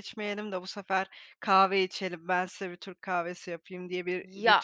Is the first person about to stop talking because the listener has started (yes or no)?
yes